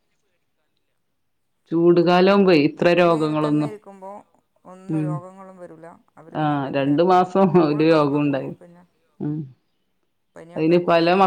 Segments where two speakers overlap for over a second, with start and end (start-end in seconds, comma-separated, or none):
6.4-8.5